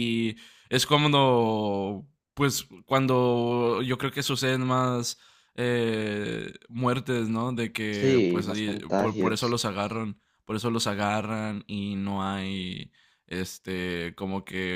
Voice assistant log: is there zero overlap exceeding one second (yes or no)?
no